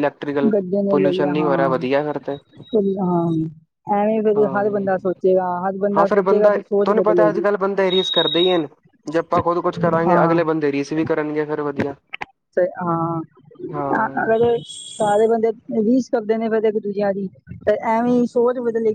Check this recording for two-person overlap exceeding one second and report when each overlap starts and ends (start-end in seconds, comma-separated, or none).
6.0-7.5